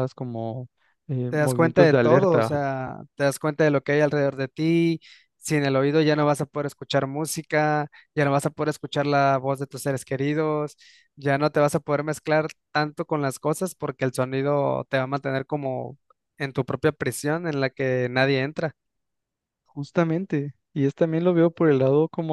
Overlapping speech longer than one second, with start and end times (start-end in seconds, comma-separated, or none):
1.3-2.6